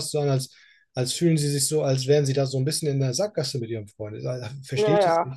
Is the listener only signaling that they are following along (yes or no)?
no